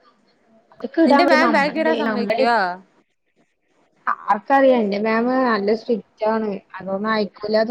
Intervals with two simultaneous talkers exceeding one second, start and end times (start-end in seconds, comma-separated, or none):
1.1-2.4